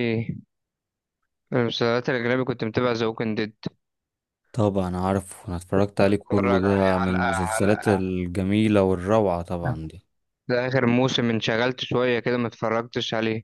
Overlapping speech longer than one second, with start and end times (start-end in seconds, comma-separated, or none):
6.0-8.0